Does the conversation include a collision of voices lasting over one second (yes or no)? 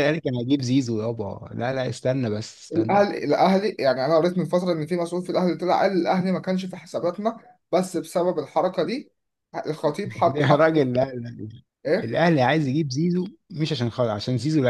no